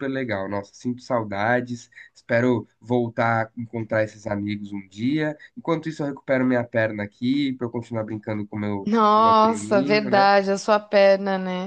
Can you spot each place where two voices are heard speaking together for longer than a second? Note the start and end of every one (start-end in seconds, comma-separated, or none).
8.8-10.3